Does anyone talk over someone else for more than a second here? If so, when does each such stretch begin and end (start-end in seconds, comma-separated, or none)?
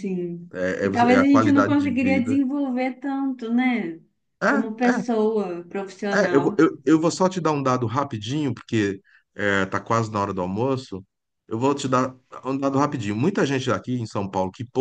0.5-2.4